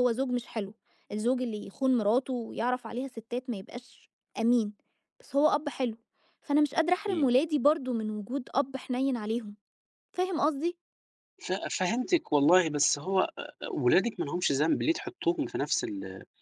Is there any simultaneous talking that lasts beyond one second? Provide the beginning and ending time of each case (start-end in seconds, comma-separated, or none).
none